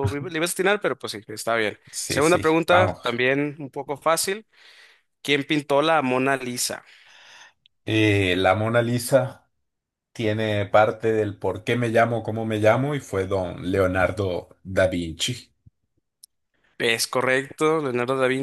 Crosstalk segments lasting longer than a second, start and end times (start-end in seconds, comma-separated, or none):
1.9-3.2